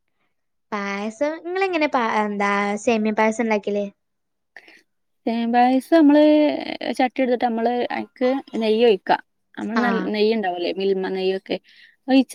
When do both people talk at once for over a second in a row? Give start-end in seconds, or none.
none